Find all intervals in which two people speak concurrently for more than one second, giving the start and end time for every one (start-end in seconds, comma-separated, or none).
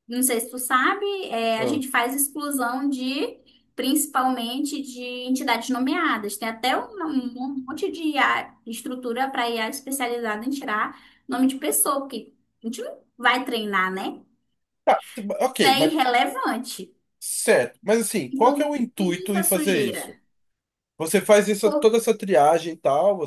18.3-20.1